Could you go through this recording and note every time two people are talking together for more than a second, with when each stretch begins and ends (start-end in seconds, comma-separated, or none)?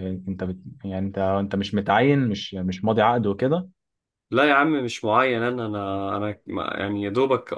none